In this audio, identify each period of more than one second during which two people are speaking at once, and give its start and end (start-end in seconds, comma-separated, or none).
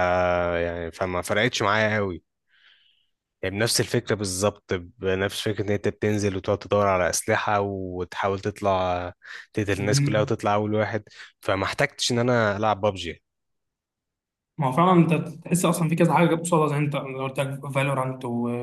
none